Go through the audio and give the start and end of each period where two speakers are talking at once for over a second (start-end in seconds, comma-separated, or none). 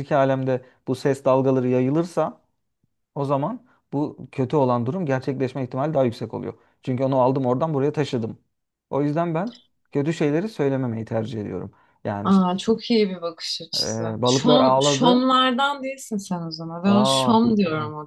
13.8-15.3